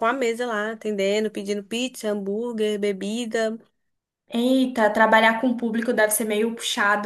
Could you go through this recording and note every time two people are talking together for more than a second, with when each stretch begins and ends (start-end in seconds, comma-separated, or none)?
none